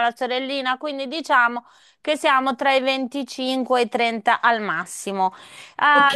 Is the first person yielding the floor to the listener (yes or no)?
no